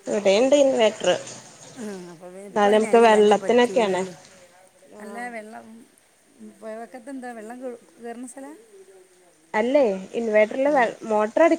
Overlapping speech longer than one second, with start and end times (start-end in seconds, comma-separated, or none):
2.5-4.0